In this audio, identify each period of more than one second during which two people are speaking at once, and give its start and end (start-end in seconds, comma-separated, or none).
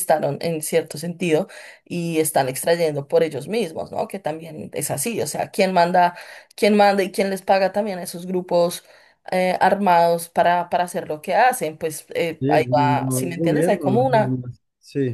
12.4-14.4